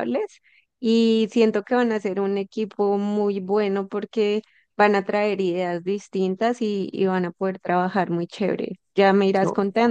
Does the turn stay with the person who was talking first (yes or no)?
yes